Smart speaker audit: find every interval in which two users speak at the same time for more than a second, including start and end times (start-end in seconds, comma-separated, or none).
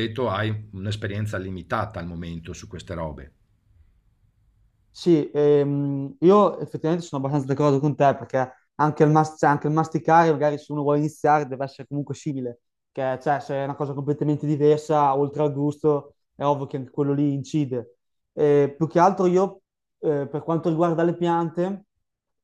none